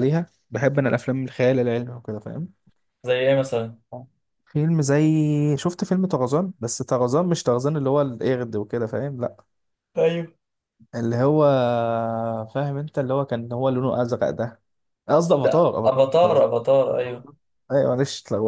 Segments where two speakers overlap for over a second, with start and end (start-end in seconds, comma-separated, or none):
15.4-17.2